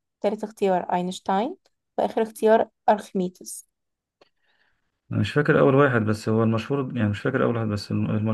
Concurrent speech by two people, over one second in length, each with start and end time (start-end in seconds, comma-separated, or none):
none